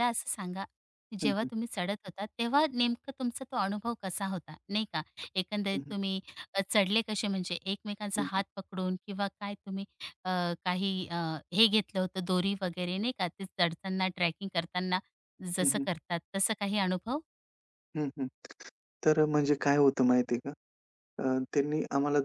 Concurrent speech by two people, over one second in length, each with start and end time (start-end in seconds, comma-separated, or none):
none